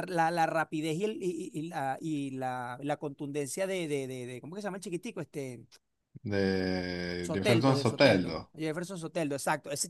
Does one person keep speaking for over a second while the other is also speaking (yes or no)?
yes